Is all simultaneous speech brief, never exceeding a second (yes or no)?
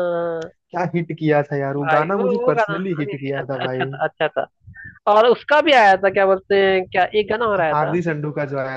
no